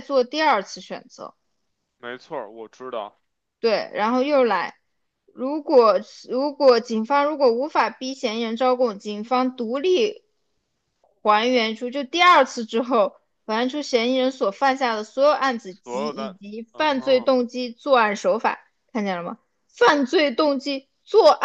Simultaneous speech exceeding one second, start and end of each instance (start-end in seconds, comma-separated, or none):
15.7-17.3